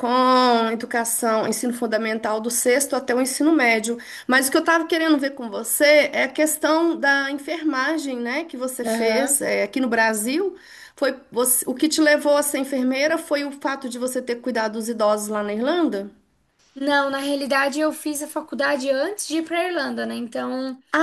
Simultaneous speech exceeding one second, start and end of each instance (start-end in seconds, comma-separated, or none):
none